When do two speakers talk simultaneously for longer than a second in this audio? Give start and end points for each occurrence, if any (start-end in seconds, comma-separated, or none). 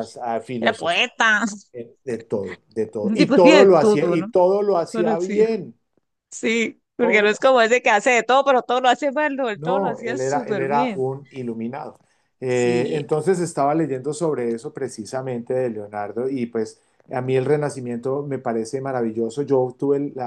3.0-4.3, 9.6-11.0